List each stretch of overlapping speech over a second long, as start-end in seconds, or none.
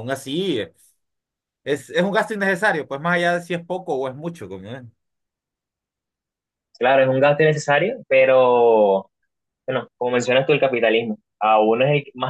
none